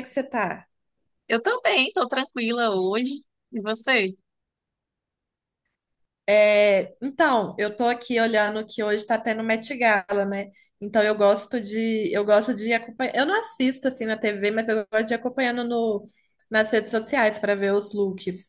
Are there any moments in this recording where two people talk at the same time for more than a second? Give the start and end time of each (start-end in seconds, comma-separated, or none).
none